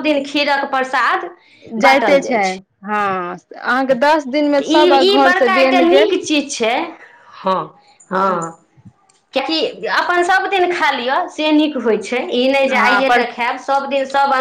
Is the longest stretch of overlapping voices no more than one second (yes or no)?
no